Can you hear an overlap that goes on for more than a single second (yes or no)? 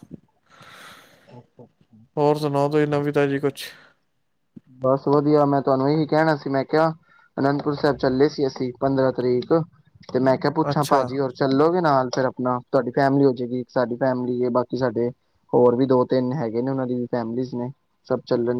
no